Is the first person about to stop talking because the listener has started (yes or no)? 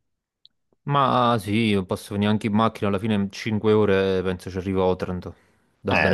yes